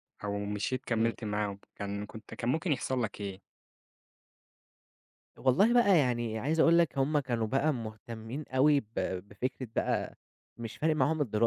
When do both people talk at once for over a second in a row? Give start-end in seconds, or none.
none